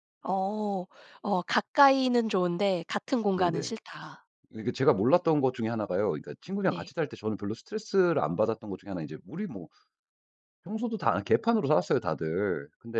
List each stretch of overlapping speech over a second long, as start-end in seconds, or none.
none